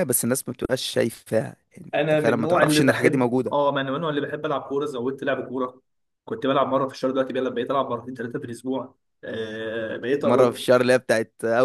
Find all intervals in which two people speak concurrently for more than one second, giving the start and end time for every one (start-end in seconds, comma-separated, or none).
1.9-3.5